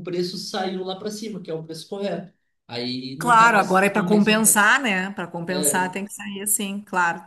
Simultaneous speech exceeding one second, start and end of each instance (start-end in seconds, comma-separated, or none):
3.2-4.7